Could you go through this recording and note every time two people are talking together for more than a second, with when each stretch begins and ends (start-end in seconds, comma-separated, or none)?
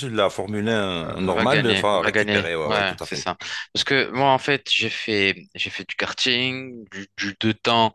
1.2-3.3